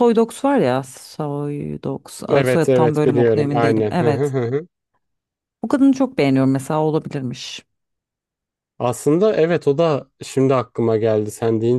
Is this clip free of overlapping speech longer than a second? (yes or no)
no